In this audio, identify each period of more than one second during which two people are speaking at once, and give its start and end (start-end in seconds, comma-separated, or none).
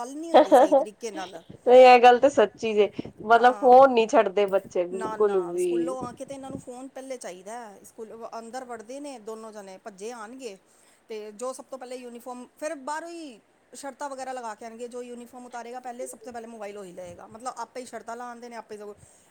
none